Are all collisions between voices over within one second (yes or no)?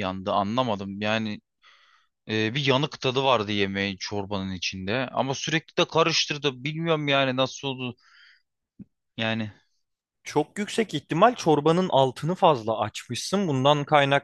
yes